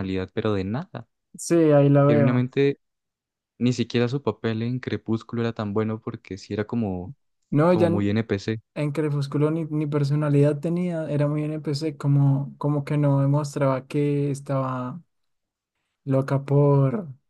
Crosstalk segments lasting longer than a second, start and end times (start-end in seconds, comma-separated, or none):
none